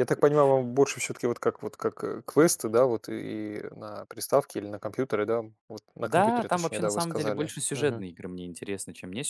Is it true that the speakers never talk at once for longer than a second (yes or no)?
no